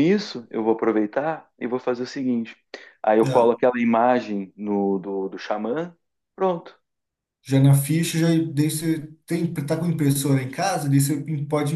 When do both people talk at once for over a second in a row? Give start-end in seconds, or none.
none